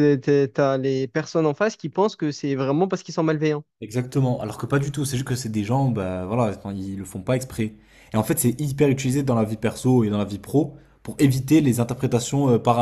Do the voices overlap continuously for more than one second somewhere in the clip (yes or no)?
no